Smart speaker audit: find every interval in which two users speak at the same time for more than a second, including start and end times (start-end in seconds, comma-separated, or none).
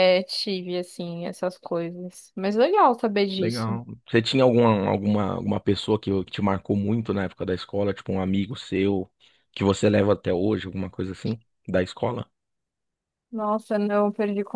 none